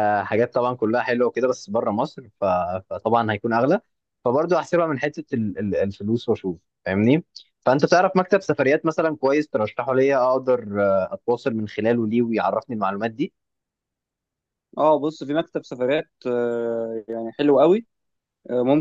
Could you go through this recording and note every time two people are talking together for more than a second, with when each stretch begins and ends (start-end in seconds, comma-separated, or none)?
none